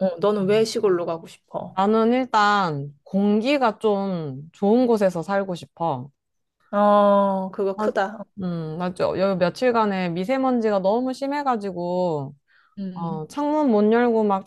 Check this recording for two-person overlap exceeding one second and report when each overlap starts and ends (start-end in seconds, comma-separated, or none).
none